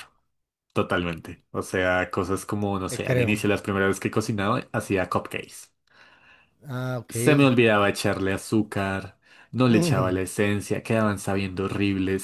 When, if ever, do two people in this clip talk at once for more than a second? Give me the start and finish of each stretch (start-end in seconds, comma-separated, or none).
none